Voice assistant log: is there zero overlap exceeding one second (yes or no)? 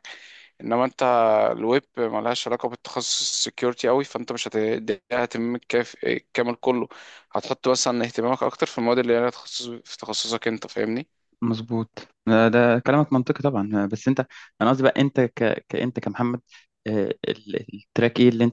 yes